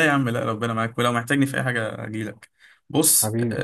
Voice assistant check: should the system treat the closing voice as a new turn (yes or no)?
no